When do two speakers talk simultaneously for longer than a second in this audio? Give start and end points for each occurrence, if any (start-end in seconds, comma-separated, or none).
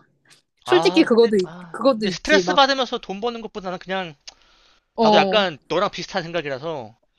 0.7-2.6